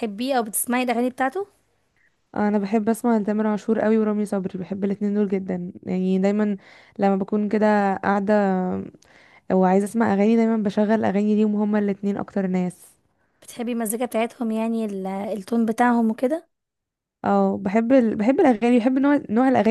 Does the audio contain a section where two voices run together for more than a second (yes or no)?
no